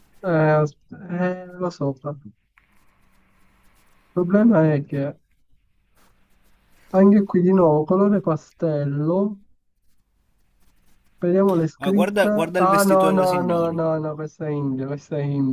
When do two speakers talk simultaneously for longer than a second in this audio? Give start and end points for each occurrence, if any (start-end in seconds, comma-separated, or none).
11.8-13.7